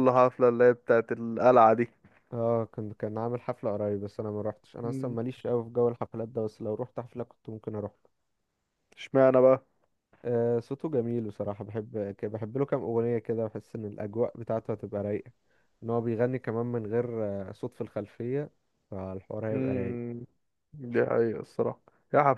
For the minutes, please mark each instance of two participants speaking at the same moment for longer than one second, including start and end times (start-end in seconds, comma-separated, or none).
none